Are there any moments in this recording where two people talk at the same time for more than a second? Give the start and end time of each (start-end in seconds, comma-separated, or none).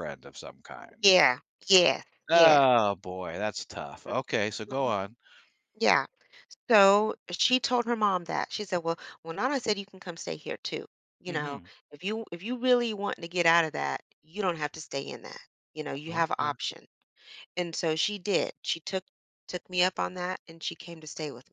none